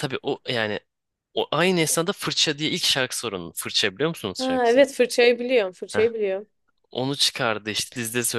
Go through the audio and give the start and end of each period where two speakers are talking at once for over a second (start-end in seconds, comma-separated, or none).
none